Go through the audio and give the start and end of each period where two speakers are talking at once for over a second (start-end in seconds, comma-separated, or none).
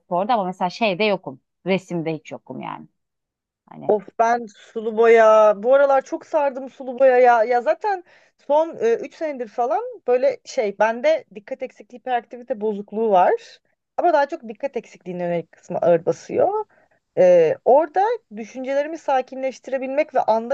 none